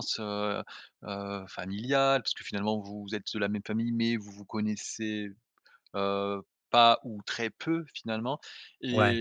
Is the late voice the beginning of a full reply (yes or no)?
no